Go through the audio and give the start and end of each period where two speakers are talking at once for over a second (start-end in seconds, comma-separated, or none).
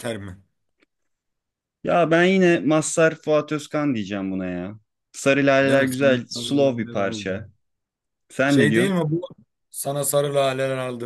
5.6-7.5